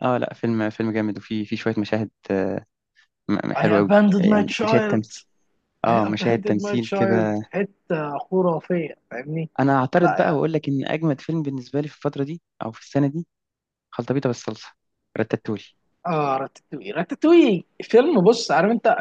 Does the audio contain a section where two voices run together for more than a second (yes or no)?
yes